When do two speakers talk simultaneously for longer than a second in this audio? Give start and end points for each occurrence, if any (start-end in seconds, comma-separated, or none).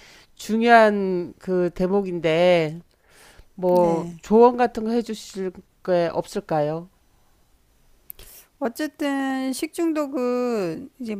none